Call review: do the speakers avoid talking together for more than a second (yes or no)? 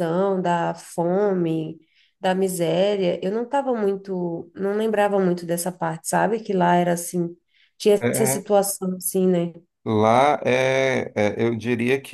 yes